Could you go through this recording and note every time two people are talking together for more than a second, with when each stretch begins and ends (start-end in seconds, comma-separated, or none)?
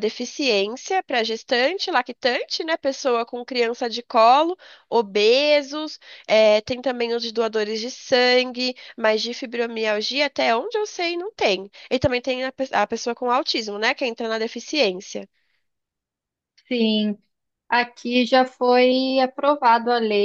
none